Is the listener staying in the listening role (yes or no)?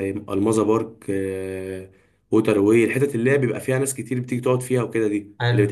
yes